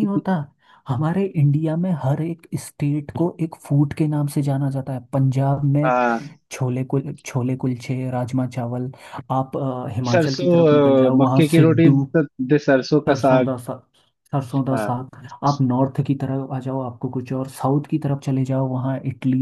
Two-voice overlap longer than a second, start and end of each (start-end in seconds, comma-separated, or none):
10.1-12.1